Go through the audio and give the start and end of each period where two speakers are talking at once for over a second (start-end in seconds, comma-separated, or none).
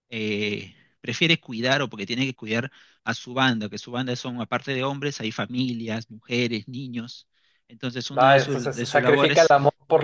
8.2-9.5